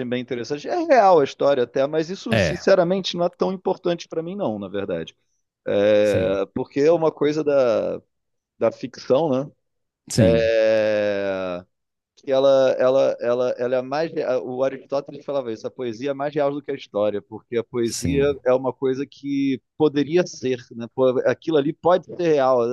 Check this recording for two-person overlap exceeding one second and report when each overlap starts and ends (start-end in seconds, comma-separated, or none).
none